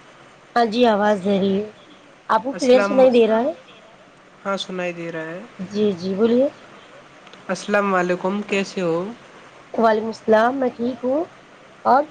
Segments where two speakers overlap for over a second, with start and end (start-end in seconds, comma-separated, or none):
none